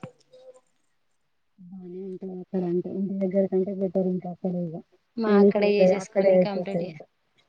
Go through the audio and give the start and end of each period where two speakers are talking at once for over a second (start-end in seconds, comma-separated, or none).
5.3-6.9